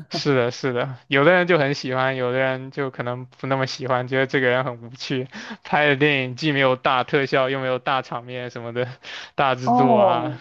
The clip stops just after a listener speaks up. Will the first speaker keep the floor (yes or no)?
no